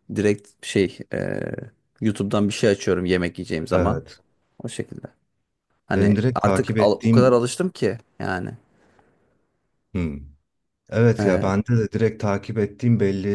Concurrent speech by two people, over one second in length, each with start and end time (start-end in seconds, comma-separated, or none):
6.0-7.5